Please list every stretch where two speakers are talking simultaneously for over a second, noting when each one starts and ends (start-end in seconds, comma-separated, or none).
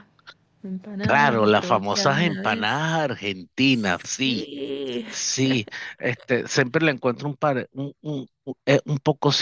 1.0-2.8